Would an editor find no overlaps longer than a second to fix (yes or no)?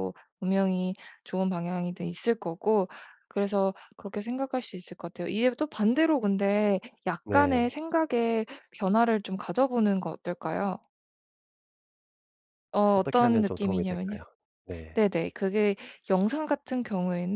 no